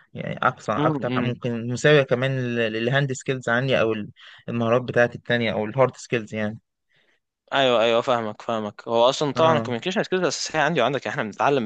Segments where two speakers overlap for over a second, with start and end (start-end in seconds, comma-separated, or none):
none